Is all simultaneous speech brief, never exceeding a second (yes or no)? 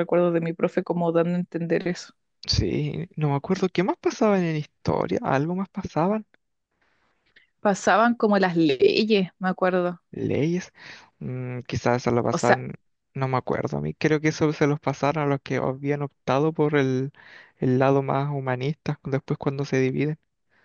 yes